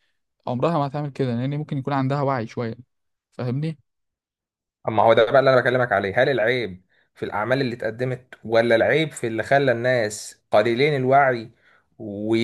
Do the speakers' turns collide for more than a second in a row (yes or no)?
no